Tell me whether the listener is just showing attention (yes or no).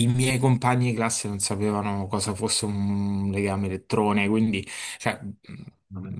yes